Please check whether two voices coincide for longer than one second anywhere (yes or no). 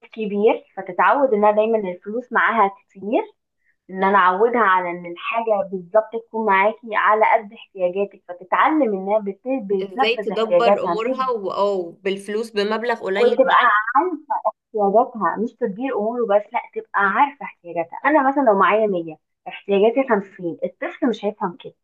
yes